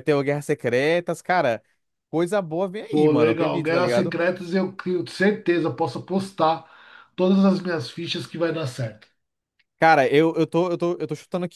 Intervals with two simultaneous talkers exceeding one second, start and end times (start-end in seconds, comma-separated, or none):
2.9-4.2